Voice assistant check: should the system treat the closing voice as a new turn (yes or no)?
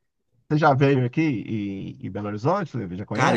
yes